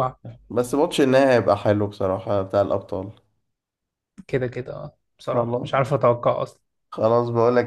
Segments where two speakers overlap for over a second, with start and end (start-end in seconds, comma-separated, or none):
none